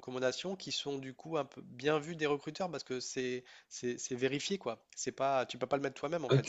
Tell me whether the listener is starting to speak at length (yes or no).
no